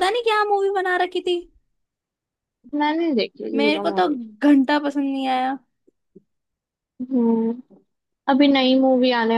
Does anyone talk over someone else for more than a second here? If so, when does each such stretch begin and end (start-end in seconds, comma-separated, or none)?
none